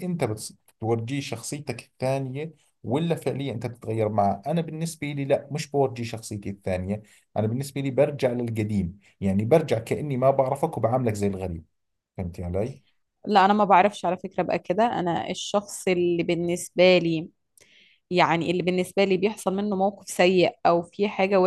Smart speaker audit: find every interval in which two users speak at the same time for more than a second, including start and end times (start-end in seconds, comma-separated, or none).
none